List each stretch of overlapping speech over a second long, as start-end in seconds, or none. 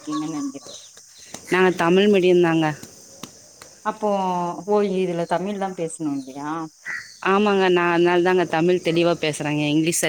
none